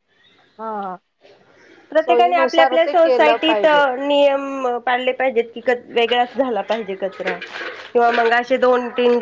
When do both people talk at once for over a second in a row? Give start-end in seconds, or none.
2.0-3.6